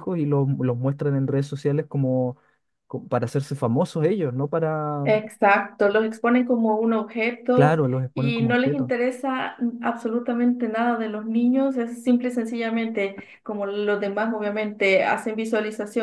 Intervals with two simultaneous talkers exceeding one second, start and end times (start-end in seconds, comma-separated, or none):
7.5-8.9